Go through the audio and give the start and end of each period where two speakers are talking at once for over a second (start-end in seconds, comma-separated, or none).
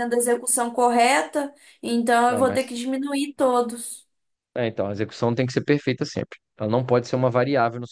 none